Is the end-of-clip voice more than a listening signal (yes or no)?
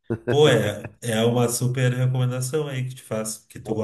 yes